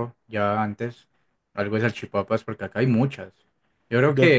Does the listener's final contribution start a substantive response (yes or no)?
no